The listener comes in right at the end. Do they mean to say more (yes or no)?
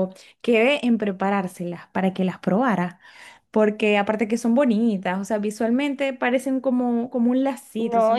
yes